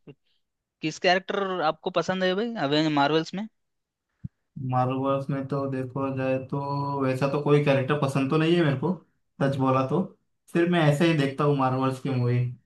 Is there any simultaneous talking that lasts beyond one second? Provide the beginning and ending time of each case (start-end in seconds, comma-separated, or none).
none